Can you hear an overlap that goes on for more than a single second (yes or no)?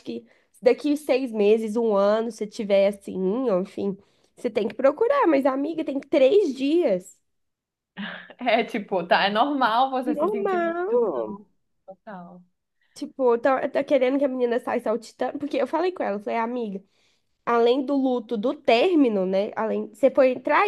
yes